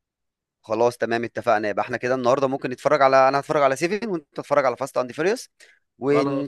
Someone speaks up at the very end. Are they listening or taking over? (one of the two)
listening